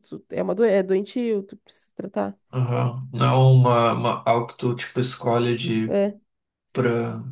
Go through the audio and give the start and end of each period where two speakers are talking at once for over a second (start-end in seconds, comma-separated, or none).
none